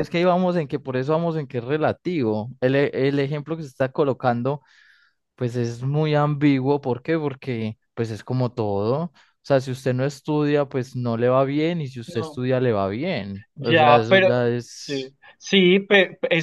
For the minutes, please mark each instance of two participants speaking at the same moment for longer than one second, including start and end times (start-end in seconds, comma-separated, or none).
13.6-15.1